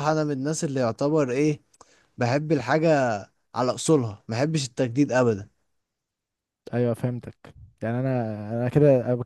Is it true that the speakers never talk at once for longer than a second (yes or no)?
yes